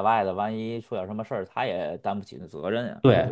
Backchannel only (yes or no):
no